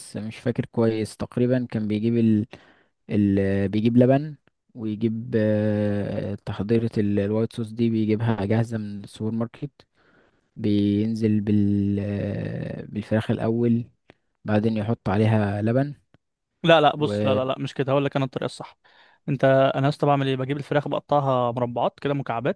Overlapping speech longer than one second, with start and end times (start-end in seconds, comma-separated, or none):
none